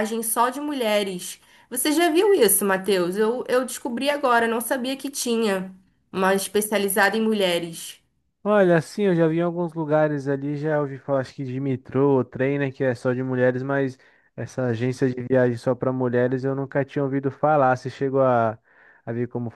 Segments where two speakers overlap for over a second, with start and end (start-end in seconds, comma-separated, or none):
none